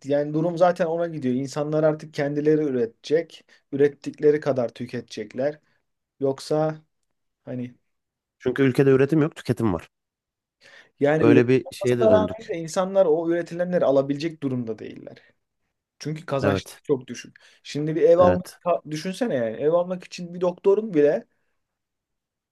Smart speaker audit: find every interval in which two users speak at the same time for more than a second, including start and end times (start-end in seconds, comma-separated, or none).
11.2-12.5